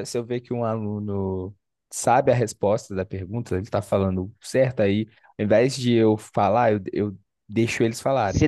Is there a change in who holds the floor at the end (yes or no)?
yes